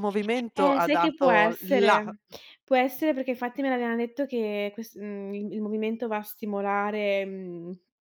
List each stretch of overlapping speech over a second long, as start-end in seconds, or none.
0.6-2.0